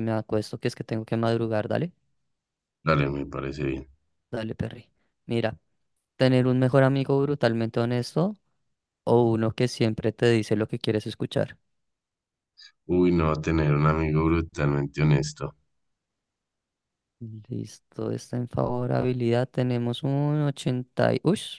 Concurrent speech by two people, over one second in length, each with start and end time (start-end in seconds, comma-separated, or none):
none